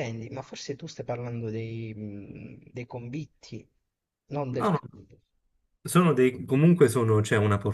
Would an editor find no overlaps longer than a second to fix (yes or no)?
yes